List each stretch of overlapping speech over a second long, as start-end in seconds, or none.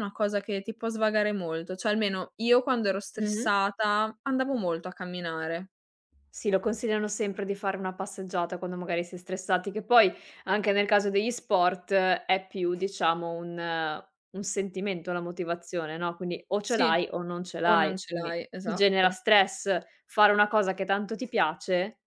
17.6-19.2